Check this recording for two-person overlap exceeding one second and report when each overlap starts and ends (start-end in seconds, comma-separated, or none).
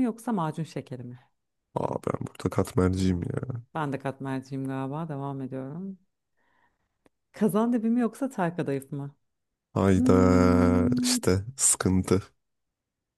9.9-11.2